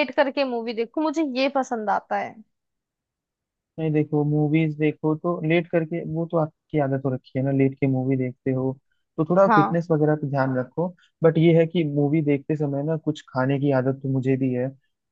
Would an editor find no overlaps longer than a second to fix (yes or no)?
yes